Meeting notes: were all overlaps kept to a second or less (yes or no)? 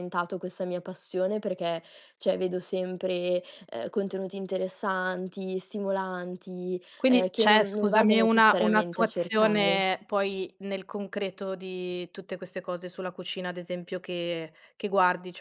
no